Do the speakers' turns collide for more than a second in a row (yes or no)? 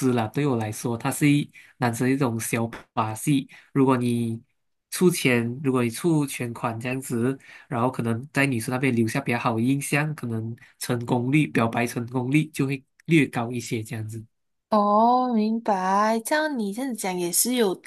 no